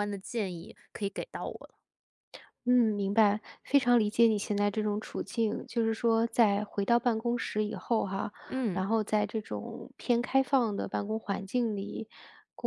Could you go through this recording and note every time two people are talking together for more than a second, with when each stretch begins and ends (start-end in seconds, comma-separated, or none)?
none